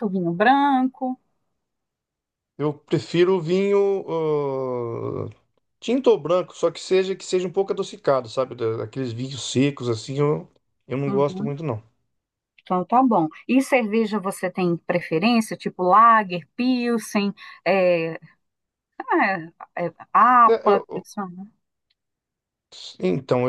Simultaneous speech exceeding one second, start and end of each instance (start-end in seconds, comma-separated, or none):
none